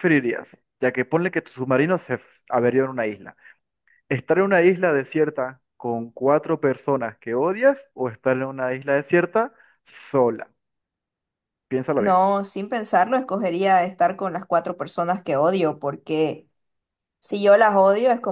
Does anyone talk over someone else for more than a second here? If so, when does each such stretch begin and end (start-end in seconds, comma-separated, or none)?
none